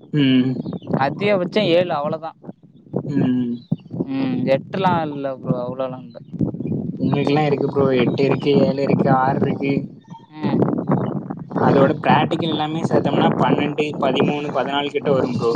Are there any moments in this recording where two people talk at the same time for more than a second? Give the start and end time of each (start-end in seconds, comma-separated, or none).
none